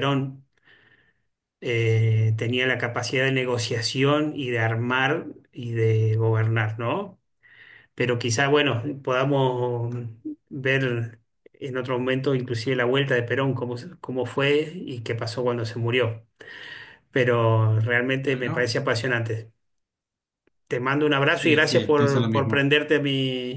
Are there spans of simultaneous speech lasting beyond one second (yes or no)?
yes